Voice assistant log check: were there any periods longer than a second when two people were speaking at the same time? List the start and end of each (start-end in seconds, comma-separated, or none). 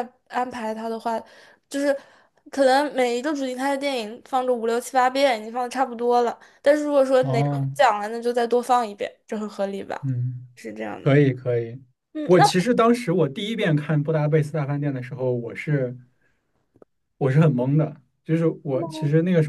none